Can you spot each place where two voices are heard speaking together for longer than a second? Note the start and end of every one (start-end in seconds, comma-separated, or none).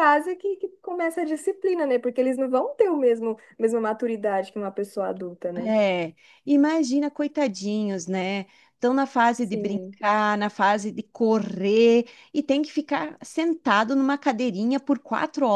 none